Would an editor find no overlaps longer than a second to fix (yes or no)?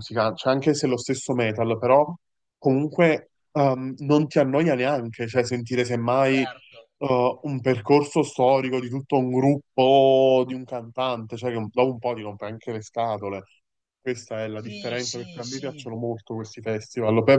no